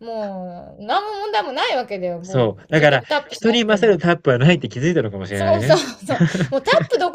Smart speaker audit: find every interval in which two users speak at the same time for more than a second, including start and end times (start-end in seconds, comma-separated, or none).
2.2-4.0